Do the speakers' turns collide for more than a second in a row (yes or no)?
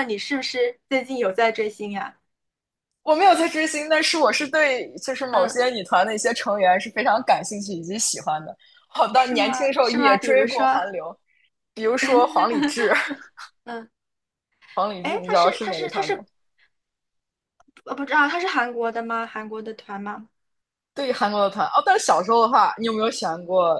yes